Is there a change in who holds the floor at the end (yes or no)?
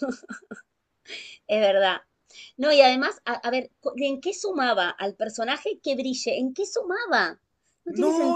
yes